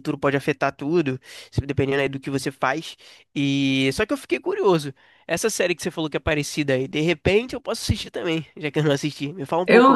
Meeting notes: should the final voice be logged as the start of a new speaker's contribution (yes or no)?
yes